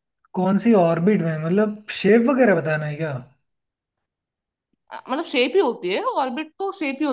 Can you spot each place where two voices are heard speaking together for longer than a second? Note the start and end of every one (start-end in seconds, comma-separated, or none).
none